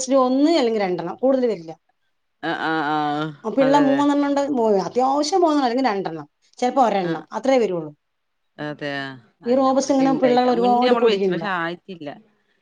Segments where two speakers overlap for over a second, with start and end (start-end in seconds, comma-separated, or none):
9.5-11.4